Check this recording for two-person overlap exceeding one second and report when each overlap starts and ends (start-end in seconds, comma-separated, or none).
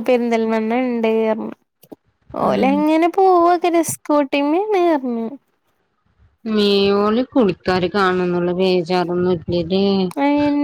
none